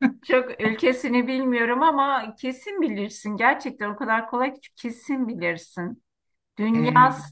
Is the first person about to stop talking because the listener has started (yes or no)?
no